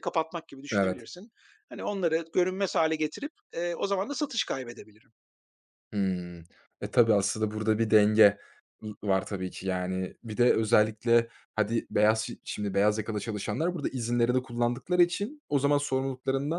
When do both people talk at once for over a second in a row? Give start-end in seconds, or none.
none